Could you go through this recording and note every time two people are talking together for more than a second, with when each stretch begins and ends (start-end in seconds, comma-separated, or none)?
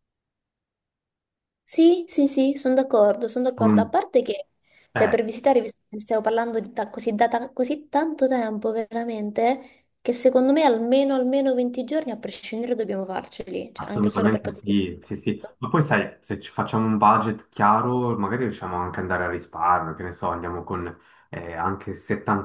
13.8-15.6